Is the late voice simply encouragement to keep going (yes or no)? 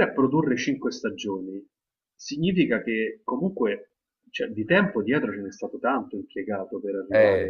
yes